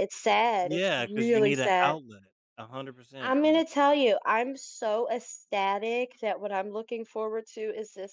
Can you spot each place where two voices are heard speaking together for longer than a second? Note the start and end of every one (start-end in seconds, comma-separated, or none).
0.6-2.0